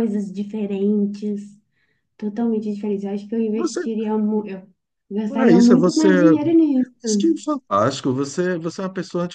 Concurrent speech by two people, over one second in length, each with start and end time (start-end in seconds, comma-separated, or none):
none